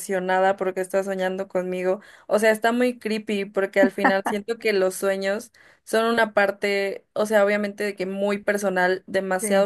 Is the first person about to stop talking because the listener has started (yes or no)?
no